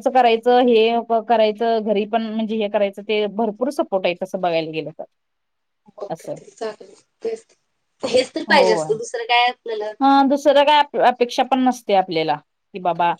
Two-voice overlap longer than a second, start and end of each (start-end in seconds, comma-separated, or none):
none